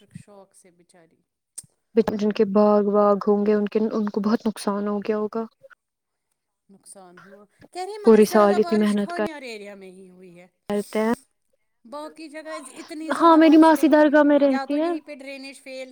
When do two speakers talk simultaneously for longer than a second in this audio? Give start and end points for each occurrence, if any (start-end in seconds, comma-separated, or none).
8.0-9.2, 13.2-14.8